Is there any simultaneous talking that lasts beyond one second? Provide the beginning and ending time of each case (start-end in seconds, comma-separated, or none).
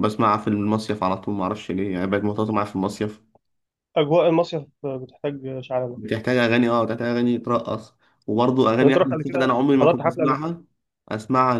8.8-10.5